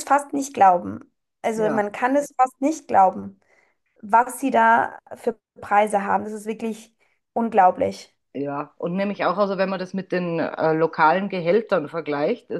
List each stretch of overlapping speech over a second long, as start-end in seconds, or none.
none